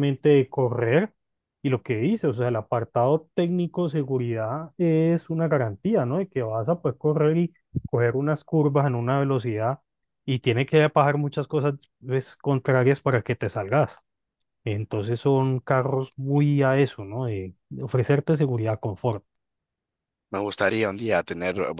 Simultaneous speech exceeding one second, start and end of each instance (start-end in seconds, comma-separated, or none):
none